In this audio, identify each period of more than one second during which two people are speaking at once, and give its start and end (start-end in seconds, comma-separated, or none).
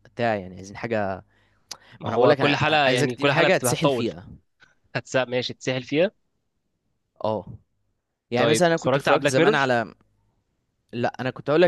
2.0-4.1, 8.4-9.7